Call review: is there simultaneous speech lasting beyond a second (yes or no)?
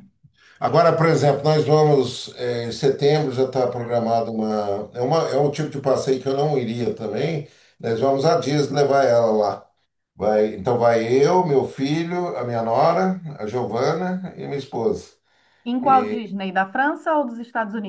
no